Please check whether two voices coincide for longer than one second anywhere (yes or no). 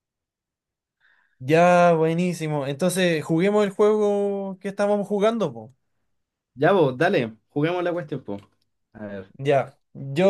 no